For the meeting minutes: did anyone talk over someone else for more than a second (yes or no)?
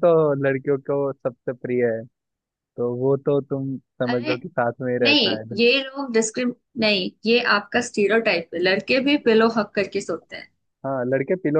no